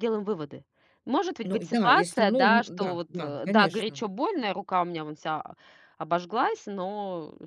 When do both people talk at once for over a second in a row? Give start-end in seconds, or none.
1.4-4.0